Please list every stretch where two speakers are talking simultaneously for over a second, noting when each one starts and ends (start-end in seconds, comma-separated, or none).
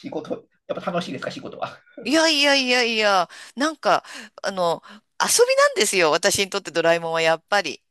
none